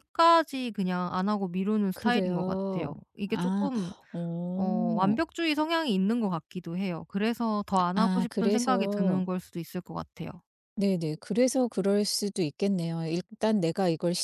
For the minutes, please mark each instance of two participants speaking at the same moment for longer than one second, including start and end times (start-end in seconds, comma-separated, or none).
2.0-3.7, 8.0-9.2